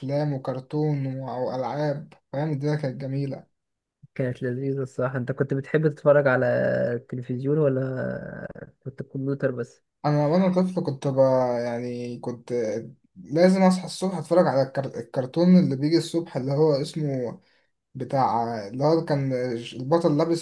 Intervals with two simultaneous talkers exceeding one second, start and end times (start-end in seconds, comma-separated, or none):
none